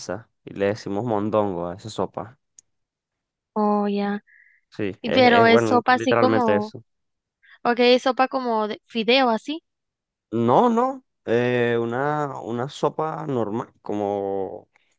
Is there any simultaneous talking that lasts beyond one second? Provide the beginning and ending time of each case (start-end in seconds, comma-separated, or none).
5.0-6.7